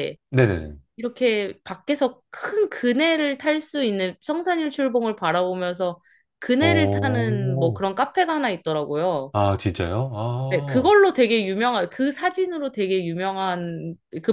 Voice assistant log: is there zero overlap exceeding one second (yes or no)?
no